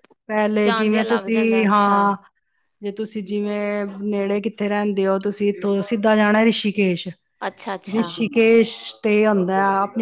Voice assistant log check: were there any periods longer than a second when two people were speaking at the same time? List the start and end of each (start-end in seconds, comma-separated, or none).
0.7-1.9